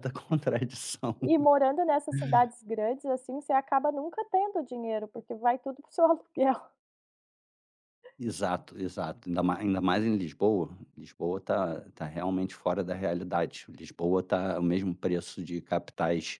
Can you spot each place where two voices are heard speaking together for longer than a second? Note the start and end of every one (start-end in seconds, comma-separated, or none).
none